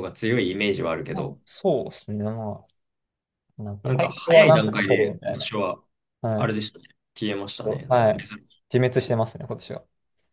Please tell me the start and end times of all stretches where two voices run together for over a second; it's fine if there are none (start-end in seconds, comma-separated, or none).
3.8-5.5